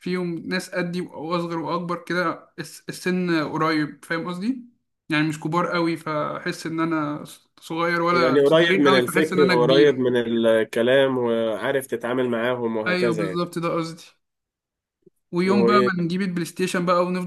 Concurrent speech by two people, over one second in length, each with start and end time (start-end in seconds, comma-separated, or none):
8.1-10.1